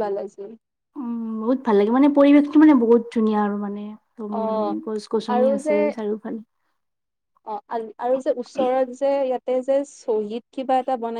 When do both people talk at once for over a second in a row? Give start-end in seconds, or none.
none